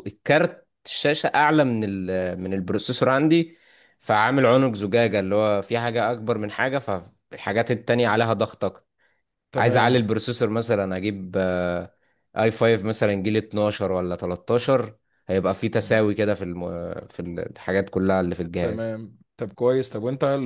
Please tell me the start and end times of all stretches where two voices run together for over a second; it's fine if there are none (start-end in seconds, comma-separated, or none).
none